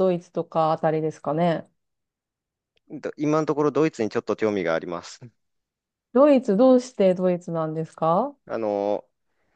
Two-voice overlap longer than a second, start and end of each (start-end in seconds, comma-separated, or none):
none